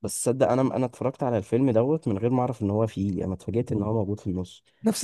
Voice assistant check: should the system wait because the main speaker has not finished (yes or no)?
yes